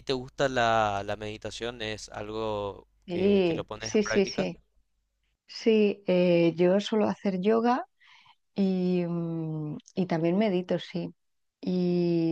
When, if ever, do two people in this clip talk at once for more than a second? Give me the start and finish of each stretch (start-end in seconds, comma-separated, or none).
3.0-4.5